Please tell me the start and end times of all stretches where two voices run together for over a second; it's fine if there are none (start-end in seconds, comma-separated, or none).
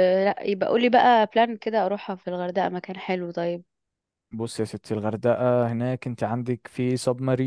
none